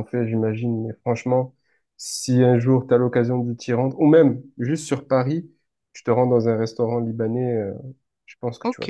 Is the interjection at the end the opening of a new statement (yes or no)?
yes